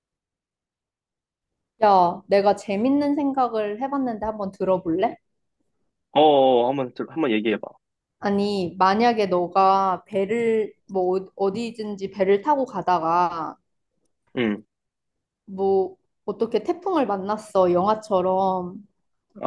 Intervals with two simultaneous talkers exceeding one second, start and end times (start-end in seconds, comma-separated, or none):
none